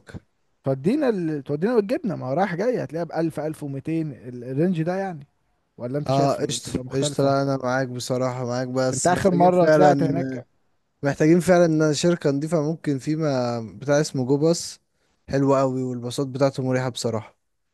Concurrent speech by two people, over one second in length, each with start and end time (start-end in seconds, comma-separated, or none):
6.1-7.3, 8.9-10.4